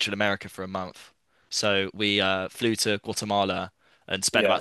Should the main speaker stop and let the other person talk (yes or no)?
no